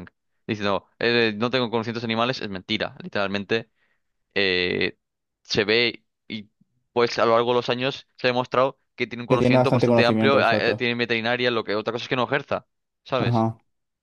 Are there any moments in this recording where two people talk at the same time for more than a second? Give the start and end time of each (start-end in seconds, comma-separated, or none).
9.3-10.9